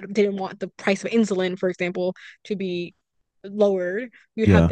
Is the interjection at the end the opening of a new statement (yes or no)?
no